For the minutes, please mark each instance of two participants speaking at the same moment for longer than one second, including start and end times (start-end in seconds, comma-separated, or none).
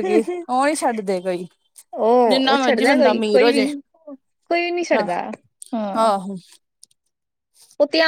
2.3-3.7